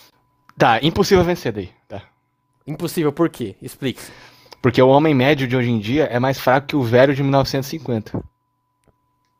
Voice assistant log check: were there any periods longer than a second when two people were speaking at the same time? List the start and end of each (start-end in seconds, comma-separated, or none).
none